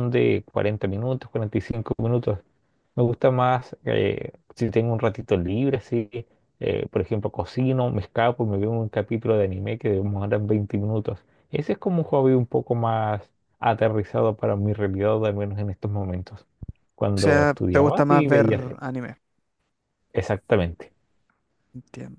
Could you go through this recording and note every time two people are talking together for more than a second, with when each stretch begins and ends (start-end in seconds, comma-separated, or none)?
17.2-18.8